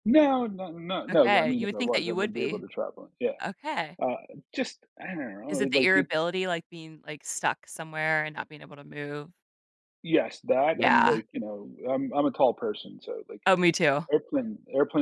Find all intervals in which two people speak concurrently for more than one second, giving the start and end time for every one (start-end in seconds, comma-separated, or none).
1.1-2.6